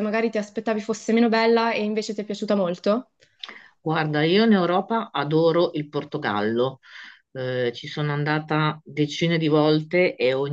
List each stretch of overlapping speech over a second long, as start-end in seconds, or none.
none